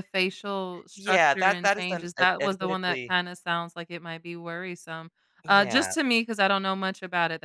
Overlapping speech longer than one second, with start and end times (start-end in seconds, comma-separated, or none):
0.9-3.1